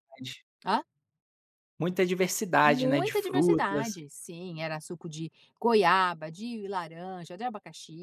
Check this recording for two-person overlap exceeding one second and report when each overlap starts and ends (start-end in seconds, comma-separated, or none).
2.6-3.9